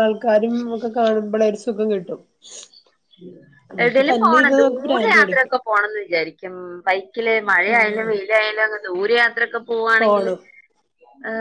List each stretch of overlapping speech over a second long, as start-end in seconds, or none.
3.8-5.5